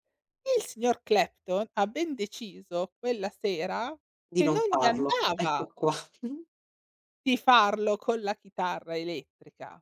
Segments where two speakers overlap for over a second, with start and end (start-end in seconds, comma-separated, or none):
4.3-5.7